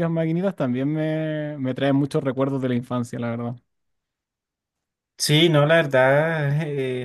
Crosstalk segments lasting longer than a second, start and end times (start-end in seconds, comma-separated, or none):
none